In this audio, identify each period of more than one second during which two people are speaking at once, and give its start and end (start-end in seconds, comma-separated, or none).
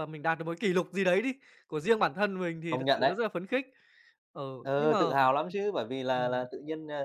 none